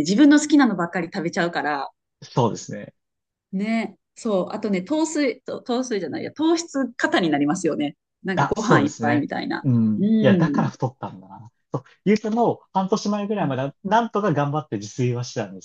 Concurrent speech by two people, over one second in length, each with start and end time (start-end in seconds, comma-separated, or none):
8.4-10.7